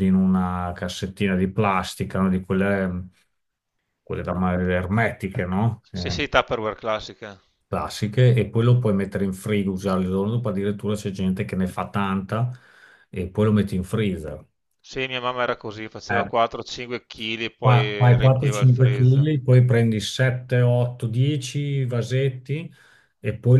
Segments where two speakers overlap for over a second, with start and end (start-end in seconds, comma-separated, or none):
17.6-19.3